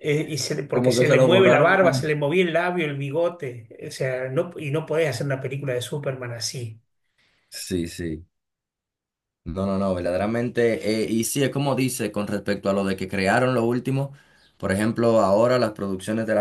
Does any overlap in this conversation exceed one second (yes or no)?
yes